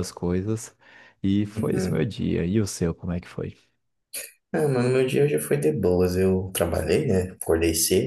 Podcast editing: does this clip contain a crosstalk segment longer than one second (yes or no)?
no